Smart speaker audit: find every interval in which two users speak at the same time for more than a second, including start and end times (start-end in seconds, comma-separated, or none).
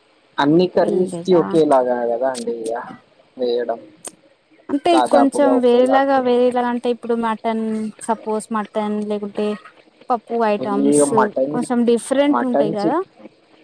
4.9-6.6